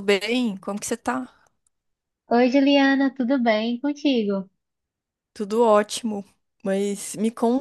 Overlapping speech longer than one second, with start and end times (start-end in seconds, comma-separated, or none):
none